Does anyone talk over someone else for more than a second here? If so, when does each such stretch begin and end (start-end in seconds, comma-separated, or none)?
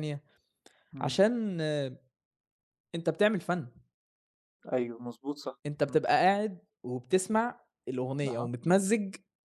none